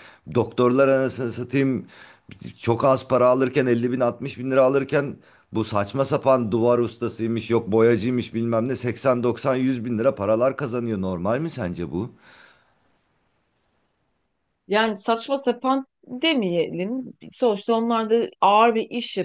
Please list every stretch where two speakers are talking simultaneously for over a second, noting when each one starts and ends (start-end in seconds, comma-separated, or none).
none